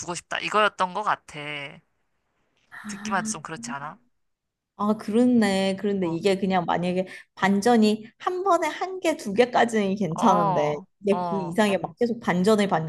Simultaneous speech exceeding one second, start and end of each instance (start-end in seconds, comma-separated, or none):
10.2-11.6